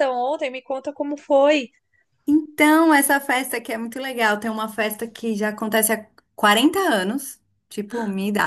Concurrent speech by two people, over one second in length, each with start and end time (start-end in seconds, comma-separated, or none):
none